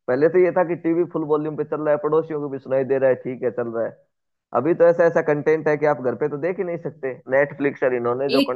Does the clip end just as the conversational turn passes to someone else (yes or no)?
yes